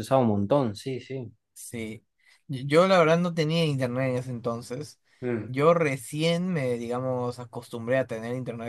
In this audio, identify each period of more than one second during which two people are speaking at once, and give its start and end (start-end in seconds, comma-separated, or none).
none